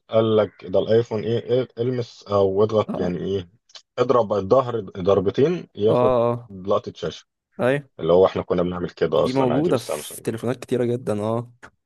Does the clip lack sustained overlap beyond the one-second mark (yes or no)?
no